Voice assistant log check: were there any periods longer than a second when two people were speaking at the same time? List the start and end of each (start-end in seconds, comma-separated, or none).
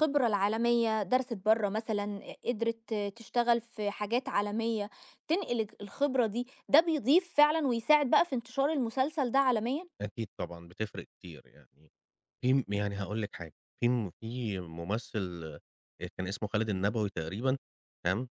none